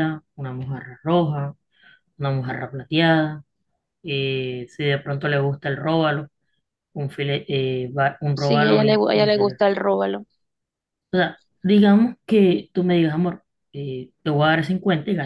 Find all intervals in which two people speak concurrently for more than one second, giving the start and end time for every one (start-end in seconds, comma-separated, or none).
8.3-9.6